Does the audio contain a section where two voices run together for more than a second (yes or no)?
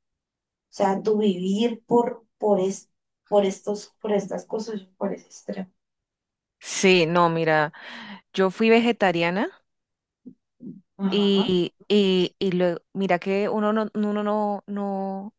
no